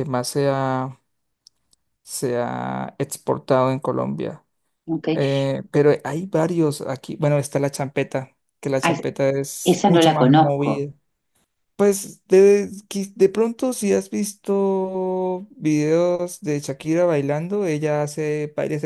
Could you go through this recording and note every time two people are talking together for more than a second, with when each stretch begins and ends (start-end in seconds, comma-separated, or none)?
9.6-10.8